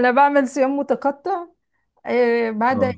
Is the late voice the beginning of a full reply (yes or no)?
no